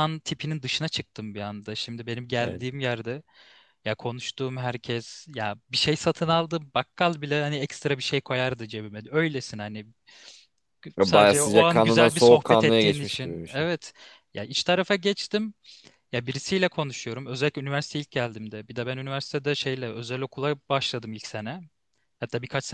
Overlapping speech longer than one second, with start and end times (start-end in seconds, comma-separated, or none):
11.0-13.7